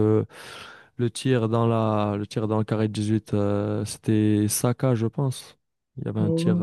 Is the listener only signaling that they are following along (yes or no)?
no